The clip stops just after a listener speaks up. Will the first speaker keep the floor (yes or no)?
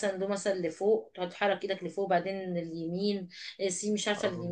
yes